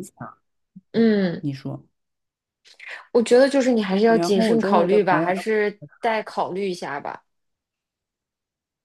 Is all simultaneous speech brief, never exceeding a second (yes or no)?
no